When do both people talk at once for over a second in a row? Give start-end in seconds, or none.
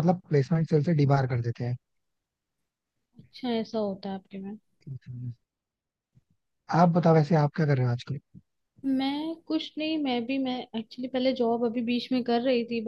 none